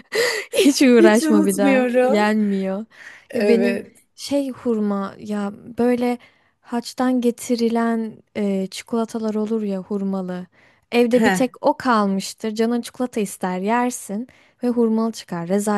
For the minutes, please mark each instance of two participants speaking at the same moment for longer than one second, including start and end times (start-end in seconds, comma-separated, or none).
1.0-2.3